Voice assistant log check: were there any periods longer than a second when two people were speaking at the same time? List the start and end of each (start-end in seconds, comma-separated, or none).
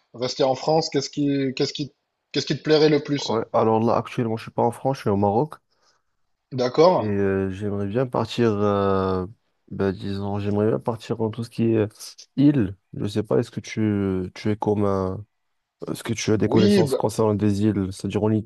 none